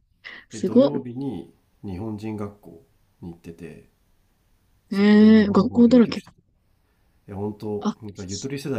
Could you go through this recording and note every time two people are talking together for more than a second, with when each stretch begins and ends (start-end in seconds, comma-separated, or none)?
4.9-6.2